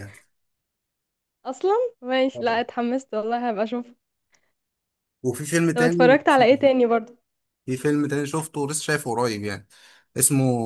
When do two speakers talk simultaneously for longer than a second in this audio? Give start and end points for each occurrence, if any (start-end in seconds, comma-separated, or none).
none